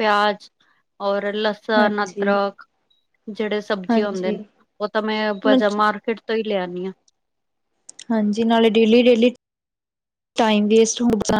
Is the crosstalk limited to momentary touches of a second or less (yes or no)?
yes